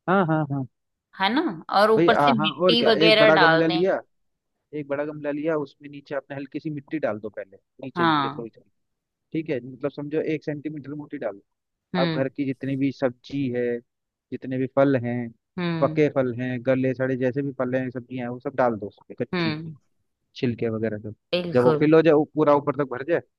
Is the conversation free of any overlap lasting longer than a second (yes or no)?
no